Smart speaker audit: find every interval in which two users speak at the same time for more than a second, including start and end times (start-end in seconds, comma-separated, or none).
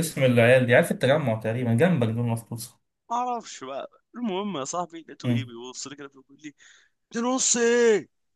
none